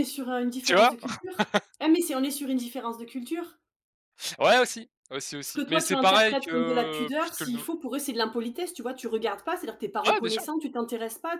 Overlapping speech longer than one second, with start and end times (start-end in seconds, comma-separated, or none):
5.4-7.7